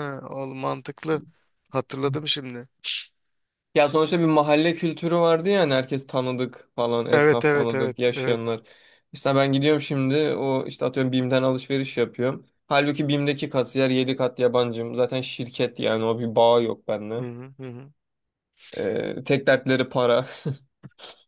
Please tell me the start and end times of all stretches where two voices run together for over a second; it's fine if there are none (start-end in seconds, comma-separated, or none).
7.1-8.5